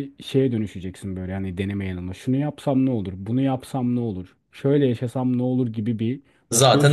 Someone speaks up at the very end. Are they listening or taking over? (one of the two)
listening